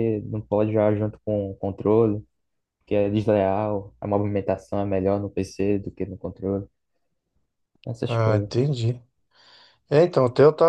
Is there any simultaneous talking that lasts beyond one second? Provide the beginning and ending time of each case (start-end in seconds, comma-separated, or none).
none